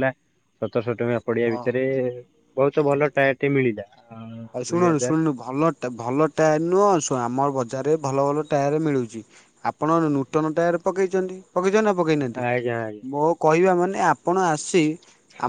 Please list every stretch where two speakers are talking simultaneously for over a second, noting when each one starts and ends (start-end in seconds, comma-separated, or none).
none